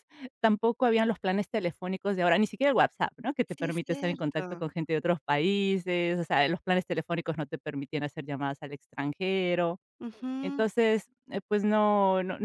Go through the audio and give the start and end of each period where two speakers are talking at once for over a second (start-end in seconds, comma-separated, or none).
3.5-4.7